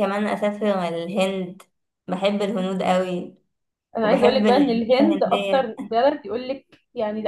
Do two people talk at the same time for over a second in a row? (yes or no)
yes